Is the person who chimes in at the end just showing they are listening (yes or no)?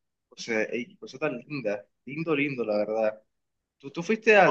yes